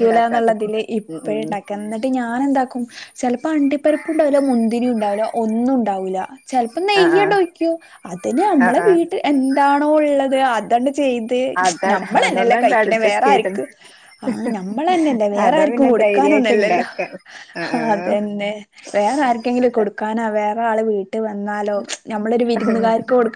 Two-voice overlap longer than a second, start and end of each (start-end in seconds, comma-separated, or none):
11.9-13.5, 15.4-16.8